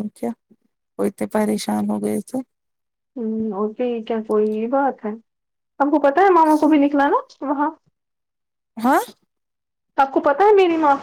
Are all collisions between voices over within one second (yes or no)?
yes